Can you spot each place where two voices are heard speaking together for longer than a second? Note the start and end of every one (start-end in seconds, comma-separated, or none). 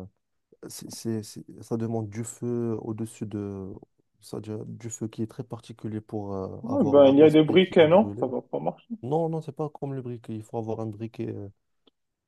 6.6-8.3